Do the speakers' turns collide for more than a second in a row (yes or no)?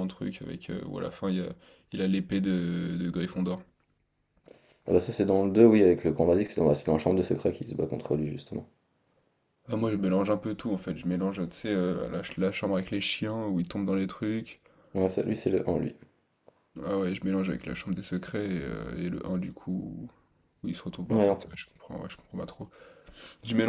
no